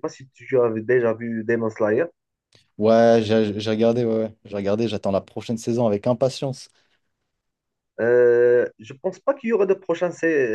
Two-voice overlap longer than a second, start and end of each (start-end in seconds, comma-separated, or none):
none